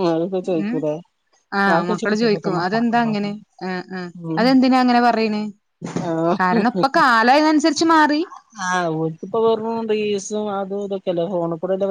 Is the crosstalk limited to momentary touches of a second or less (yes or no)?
no